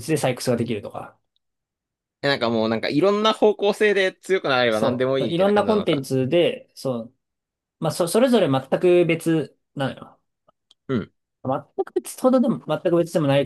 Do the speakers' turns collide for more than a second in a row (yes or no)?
yes